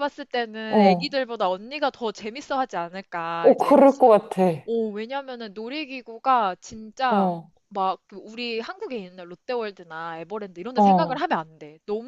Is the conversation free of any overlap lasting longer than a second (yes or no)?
yes